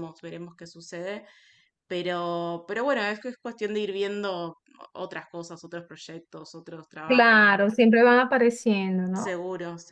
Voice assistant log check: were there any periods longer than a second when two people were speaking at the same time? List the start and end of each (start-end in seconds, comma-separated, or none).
none